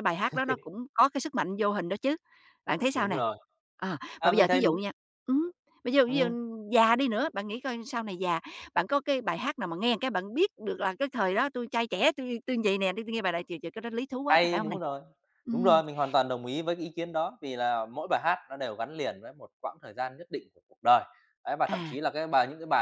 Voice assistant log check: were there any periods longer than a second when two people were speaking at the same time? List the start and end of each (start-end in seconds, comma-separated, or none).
none